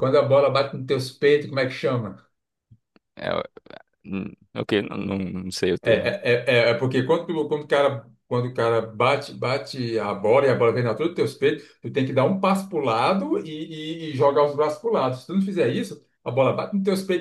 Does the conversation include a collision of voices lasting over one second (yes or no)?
no